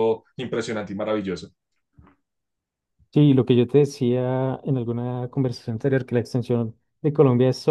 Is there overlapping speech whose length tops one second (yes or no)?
no